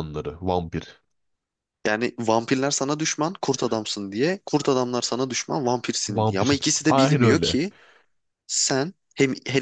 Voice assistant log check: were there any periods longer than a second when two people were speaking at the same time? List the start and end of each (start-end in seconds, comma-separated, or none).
6.1-7.6